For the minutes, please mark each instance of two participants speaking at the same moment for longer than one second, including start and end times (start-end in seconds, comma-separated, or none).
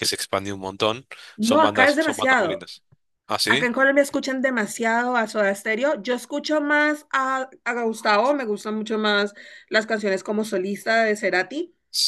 1.4-2.7